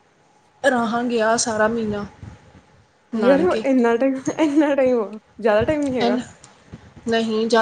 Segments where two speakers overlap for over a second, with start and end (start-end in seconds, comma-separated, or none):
none